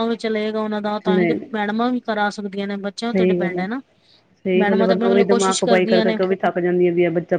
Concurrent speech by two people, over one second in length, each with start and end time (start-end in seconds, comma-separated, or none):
4.6-6.2